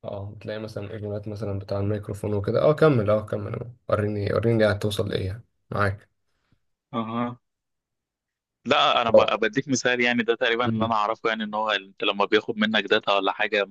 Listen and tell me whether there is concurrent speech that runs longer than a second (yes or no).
no